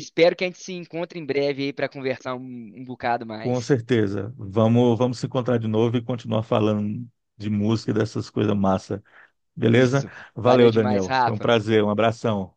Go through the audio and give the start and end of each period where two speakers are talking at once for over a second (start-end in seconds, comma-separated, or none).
9.7-11.5